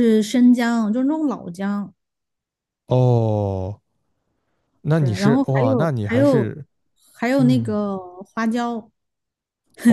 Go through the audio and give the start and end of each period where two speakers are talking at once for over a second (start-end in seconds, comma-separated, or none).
5.0-6.5